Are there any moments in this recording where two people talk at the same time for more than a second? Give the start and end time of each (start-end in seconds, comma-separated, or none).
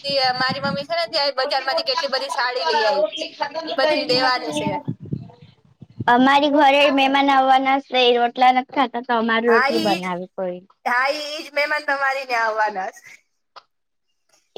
none